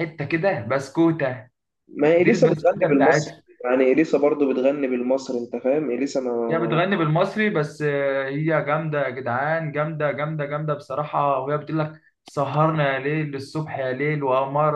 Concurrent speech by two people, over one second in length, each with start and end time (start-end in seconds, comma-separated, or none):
2.2-3.4